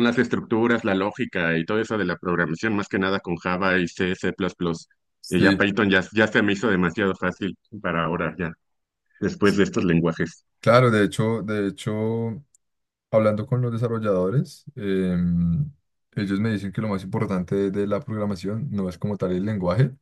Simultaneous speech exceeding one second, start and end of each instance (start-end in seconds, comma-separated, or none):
none